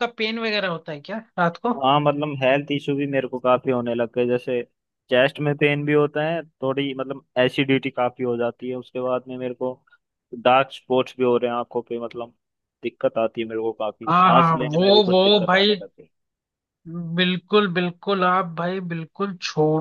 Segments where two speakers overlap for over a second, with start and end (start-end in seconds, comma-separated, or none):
14.1-15.8